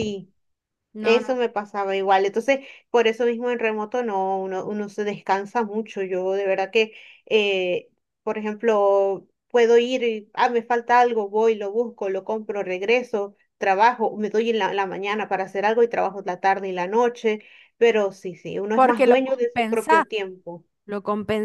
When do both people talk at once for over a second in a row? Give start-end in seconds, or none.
18.7-20.0